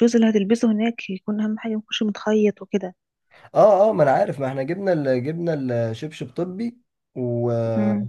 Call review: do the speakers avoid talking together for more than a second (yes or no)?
yes